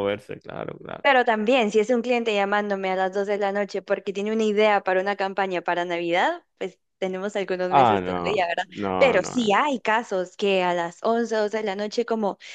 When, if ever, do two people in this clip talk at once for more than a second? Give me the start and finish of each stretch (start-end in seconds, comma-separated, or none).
7.7-9.5